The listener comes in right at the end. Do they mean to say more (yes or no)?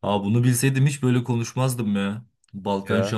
no